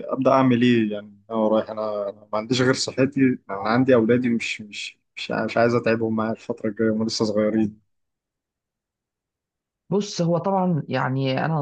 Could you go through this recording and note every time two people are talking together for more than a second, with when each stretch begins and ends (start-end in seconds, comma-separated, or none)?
none